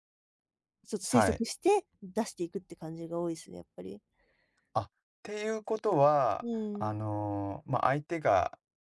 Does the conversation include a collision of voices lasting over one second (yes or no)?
no